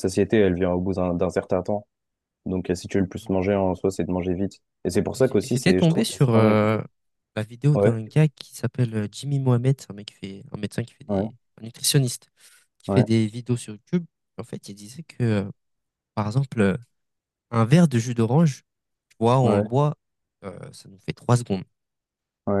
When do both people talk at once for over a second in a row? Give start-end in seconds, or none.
5.2-6.8